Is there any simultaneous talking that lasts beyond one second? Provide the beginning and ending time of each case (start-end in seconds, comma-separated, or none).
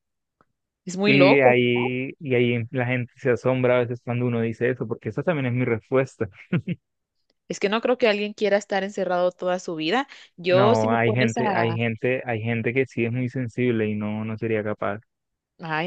10.5-11.8